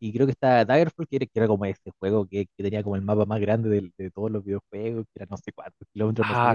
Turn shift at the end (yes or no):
yes